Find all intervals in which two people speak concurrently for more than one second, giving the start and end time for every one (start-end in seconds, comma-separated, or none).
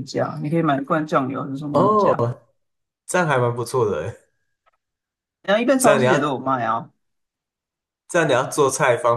none